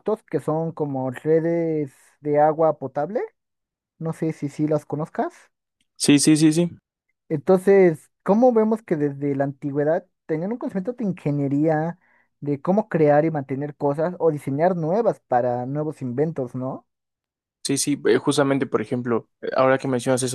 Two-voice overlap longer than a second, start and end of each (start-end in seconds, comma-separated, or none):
none